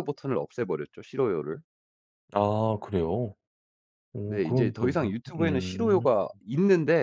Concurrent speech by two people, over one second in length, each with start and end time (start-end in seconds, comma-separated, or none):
4.3-6.1